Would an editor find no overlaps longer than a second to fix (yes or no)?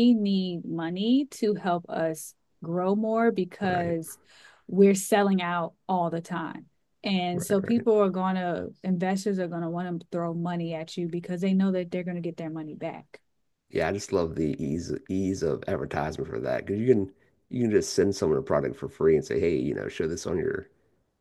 yes